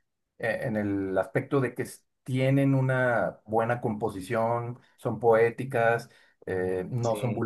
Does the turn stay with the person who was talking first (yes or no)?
yes